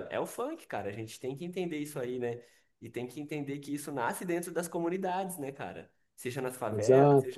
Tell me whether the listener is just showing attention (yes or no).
yes